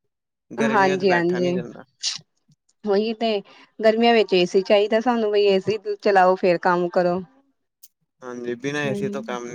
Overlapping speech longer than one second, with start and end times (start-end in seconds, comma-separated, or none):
none